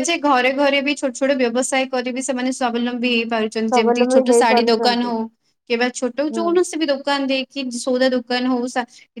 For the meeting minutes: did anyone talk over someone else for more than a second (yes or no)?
yes